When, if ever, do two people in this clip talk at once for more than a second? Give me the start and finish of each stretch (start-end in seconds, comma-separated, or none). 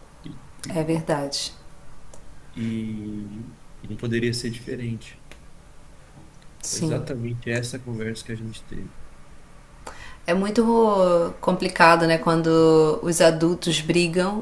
none